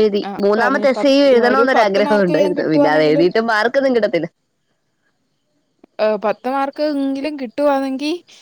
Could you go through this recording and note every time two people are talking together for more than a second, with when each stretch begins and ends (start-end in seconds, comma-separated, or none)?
0.6-3.3